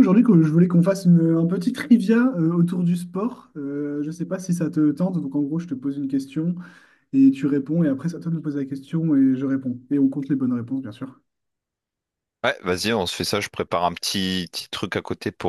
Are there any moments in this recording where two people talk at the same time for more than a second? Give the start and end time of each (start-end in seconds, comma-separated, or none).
none